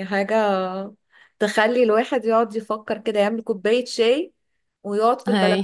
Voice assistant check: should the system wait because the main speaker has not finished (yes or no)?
yes